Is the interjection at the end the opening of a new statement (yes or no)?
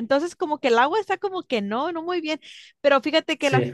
no